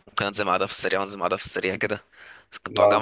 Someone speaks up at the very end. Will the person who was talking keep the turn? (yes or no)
yes